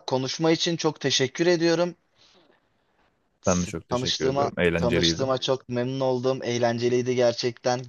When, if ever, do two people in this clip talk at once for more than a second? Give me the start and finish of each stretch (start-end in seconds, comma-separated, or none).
3.5-5.2